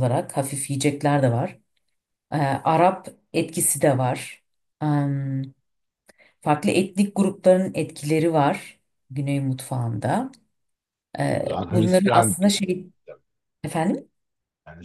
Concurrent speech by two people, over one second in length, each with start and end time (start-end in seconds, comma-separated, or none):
11.4-12.8